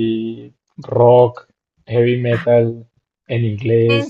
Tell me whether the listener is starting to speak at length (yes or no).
yes